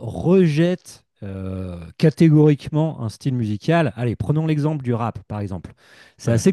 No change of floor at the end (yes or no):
yes